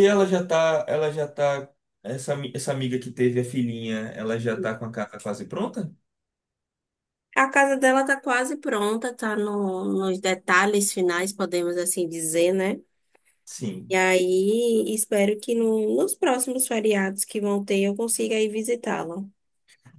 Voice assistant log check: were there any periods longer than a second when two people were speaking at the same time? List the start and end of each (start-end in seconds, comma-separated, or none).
none